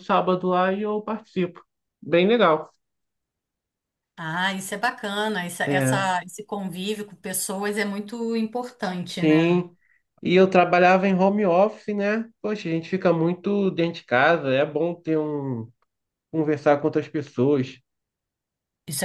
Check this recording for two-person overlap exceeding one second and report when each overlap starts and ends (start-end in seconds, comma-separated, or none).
none